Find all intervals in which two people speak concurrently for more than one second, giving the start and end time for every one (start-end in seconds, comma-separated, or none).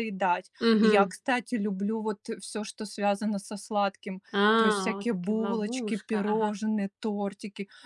4.3-6.6